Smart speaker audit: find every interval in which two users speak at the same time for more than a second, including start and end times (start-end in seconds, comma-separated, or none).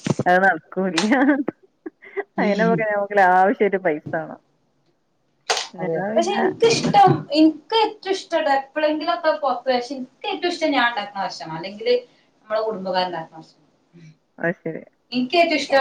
none